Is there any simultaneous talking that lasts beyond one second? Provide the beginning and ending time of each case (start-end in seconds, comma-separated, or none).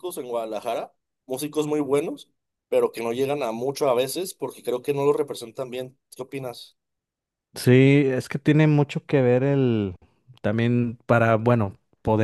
none